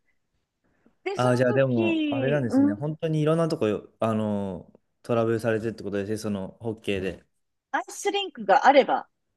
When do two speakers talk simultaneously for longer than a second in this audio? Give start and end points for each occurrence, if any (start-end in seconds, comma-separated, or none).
1.1-2.9